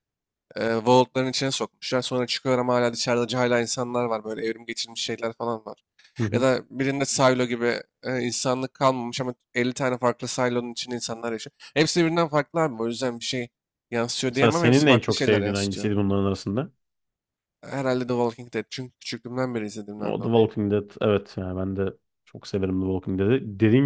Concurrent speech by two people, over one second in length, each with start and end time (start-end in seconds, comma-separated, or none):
14.3-15.9